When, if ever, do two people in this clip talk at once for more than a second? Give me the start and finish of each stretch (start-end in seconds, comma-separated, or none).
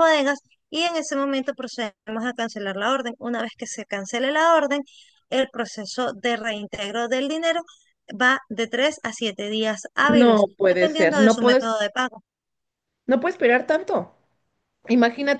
10.1-11.7